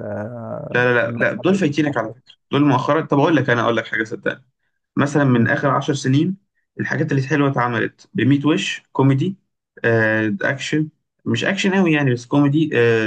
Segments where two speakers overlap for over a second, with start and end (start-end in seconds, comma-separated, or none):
0.7-2.1